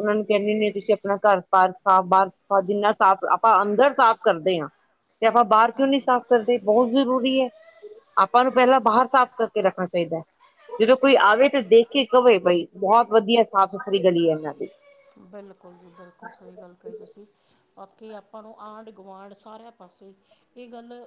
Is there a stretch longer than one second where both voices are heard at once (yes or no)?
no